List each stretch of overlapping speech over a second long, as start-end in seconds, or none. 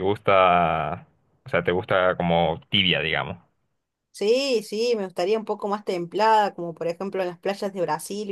none